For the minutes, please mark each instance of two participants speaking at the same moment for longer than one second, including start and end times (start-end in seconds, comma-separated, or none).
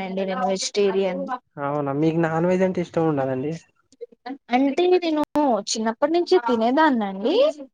none